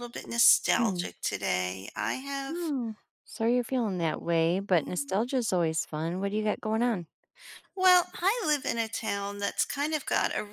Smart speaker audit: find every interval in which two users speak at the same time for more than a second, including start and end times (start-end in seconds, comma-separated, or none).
none